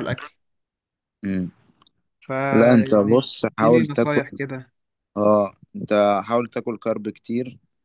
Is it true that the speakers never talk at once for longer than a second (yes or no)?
no